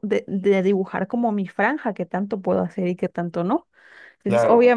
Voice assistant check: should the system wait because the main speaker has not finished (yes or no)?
yes